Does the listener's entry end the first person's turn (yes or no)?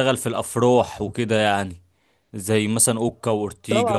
yes